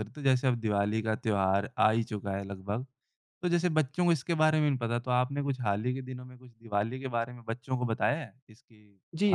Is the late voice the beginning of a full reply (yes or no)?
yes